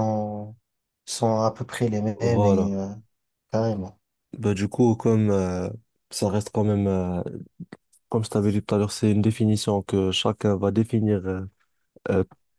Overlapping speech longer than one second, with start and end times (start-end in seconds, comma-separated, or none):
none